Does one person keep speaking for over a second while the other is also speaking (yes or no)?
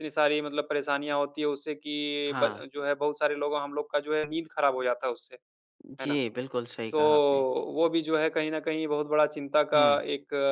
no